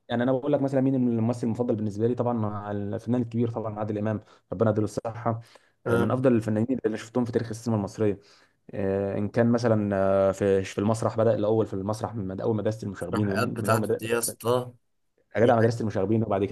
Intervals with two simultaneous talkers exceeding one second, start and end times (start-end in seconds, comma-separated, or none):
13.0-14.4